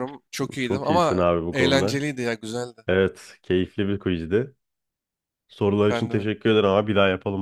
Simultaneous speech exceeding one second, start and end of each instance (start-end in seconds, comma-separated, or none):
0.6-2.0